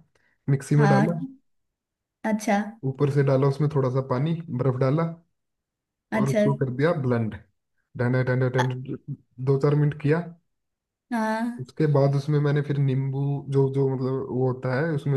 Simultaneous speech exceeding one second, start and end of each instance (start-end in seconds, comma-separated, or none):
none